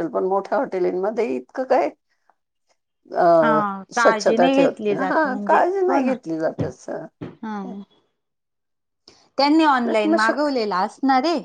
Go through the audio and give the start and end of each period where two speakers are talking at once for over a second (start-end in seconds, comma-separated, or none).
3.4-6.1